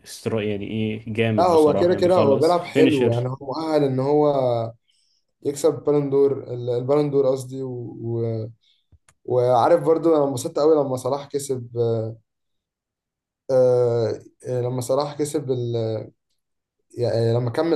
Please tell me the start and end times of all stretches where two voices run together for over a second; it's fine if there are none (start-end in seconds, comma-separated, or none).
1.4-3.3